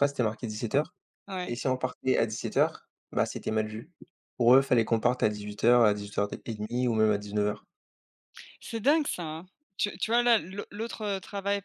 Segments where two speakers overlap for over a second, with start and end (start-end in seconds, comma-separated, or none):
none